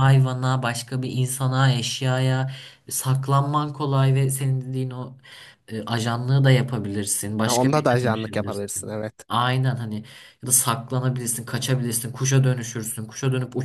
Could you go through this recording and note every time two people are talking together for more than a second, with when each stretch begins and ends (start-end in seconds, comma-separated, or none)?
7.5-9.1